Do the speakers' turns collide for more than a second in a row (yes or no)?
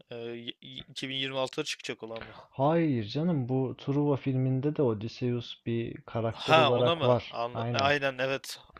yes